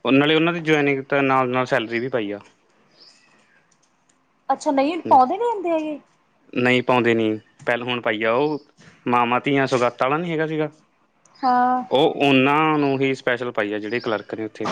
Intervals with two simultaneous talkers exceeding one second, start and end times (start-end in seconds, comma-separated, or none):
none